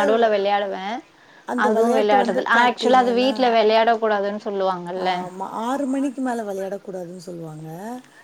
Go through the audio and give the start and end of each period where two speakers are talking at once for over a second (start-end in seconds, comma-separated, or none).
1.7-3.3